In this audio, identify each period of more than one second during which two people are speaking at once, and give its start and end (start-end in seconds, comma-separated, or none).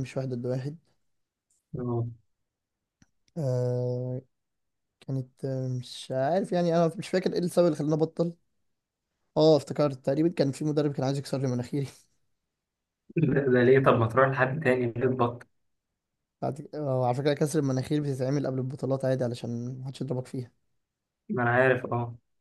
none